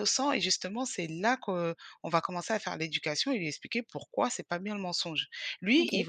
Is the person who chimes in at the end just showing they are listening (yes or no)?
yes